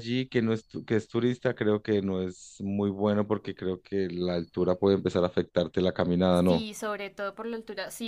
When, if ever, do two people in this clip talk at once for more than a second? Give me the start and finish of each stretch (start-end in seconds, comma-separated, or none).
none